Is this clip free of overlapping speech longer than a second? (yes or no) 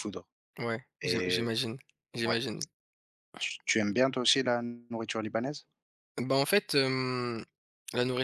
yes